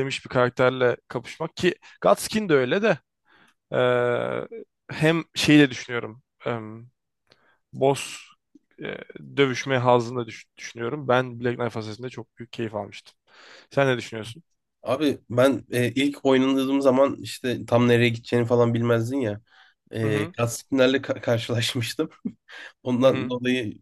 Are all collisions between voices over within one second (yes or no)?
yes